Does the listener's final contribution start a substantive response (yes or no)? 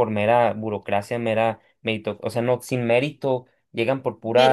no